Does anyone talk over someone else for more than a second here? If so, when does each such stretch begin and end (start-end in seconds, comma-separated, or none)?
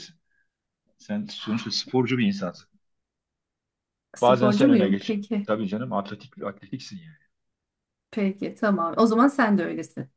4.2-5.5